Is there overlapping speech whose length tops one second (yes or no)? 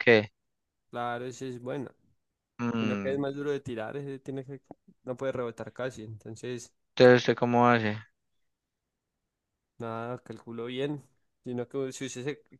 no